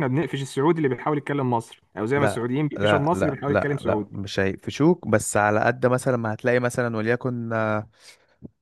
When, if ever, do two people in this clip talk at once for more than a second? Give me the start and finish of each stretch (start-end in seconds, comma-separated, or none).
2.1-4.2